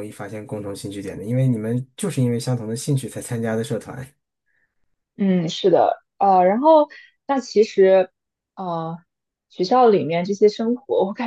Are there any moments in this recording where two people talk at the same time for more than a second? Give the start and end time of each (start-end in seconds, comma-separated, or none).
none